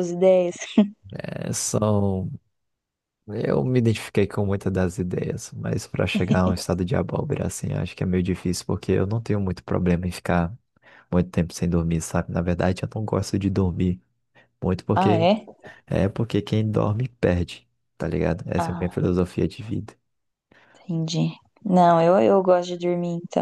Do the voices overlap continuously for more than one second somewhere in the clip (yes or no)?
no